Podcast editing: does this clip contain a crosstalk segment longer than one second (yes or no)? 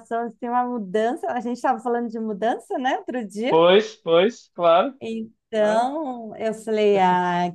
no